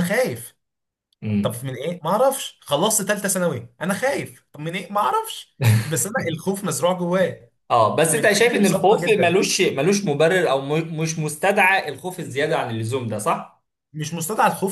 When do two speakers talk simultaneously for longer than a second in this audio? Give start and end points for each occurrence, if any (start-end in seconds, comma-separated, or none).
8.1-9.3